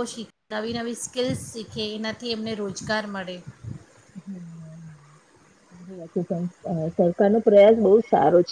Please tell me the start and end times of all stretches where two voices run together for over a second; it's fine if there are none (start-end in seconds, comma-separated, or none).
none